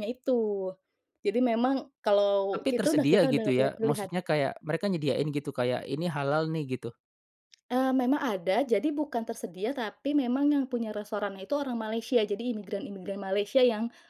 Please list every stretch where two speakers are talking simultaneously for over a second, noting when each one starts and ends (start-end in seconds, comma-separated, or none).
2.5-4.1